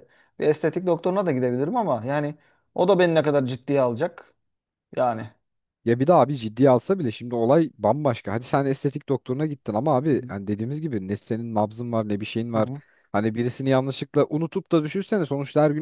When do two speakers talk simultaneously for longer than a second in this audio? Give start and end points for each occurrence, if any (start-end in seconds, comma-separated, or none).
none